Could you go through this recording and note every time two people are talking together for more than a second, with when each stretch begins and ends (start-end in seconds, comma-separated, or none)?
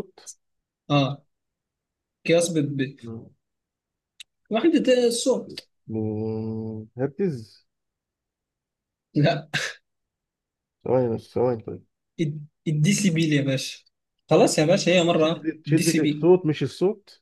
15.1-16.3